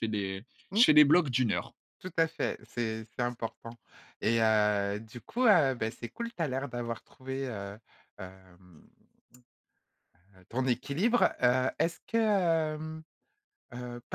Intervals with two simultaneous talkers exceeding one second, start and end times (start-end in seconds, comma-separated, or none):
none